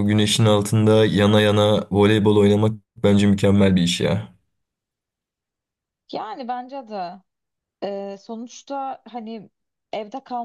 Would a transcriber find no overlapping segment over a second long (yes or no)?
yes